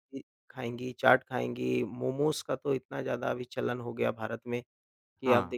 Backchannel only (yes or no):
yes